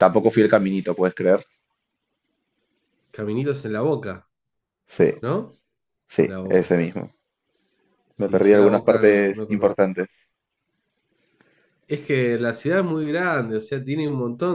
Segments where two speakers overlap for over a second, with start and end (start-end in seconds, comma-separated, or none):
8.2-9.9